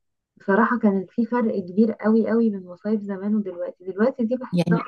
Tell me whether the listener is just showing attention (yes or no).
yes